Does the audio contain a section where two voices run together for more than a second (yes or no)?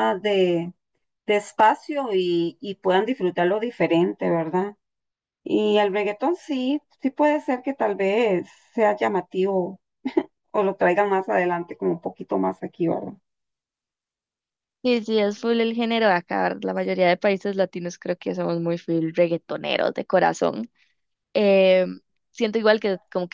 no